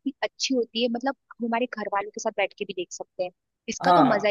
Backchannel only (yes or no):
no